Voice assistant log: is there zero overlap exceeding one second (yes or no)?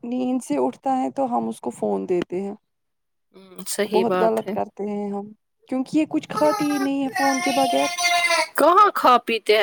yes